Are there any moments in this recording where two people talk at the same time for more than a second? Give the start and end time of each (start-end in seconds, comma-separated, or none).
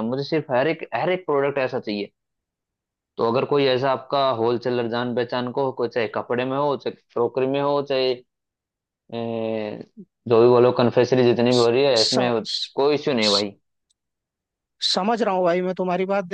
none